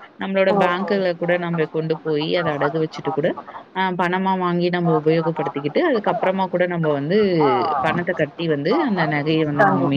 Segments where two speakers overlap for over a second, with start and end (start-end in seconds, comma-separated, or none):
4.9-6.3